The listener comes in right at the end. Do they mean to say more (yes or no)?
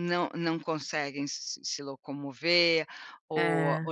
no